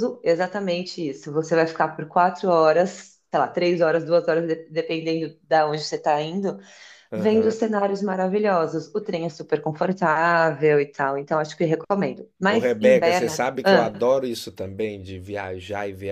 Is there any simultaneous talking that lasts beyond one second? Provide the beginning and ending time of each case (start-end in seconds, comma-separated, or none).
12.5-14.1